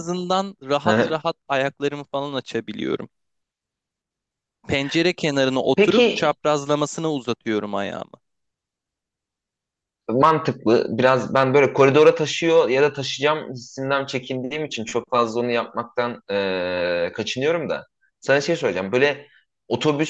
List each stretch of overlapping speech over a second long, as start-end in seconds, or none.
none